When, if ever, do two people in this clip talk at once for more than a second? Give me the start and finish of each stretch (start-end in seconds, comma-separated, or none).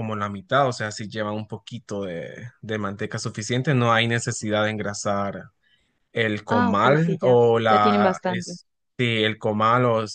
6.5-8.6